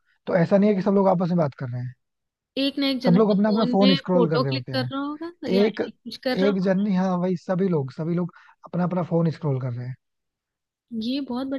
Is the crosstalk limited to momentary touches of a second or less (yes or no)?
no